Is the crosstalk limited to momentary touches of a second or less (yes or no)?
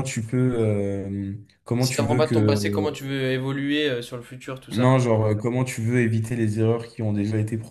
no